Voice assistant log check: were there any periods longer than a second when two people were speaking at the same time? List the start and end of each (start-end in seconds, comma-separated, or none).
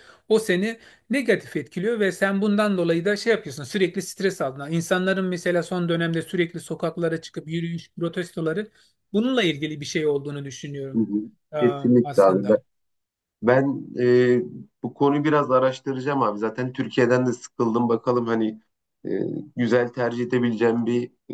none